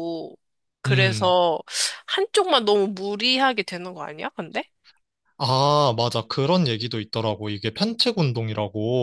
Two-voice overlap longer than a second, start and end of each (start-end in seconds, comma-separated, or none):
none